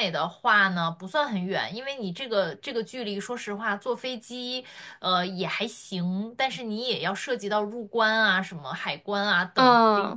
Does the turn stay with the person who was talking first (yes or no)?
yes